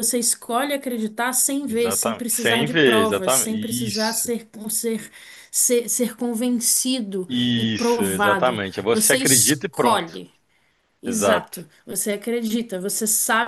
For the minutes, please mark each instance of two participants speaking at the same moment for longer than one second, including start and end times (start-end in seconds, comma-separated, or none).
1.7-4.3, 7.3-10.0